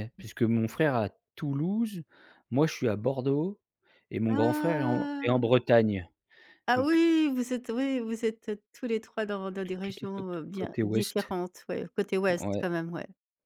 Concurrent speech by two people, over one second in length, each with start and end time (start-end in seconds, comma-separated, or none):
4.3-5.5, 9.8-11.3